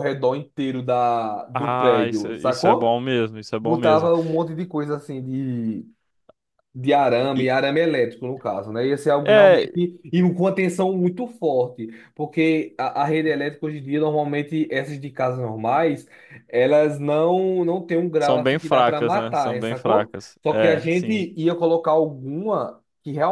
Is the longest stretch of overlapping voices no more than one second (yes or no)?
no